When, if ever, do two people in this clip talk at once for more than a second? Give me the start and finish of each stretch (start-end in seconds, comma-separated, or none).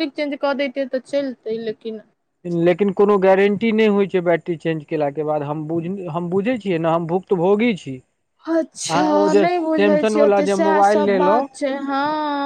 8.7-11.5